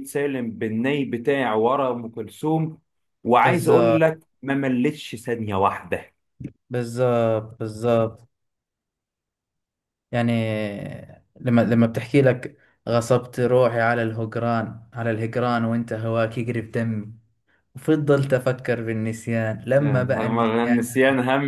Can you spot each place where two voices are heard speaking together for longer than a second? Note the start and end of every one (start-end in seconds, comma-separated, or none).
19.8-21.0